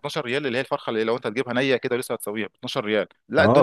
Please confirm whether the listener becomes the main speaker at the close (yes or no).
no